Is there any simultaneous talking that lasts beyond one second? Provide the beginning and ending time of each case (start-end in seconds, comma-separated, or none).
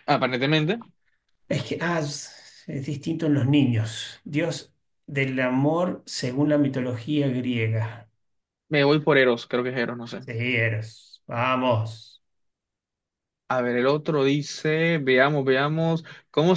none